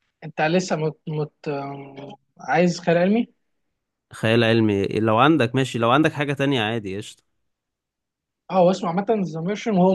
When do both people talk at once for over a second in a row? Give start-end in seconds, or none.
none